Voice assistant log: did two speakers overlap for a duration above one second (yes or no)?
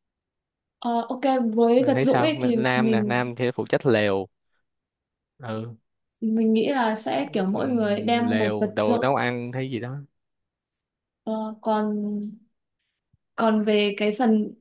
yes